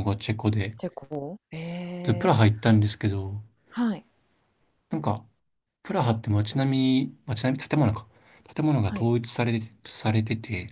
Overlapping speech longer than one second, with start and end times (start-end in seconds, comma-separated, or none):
none